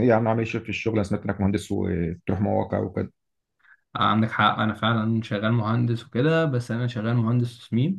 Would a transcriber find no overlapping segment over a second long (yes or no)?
yes